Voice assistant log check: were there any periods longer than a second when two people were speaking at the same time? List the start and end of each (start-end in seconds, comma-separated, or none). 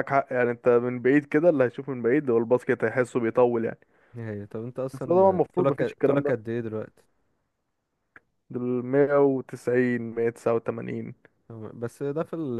4.9-6.3